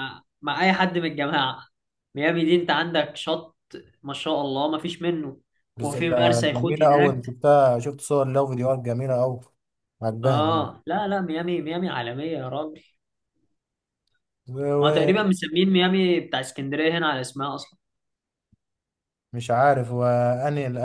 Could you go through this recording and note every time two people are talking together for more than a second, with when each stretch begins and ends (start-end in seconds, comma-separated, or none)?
5.8-7.4